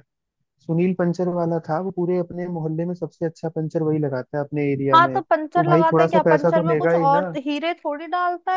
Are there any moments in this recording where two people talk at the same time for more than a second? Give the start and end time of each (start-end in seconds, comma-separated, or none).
4.9-7.3